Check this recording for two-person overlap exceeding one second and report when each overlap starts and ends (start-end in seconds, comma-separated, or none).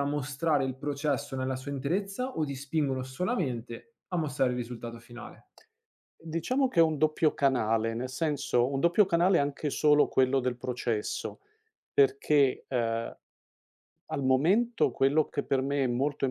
none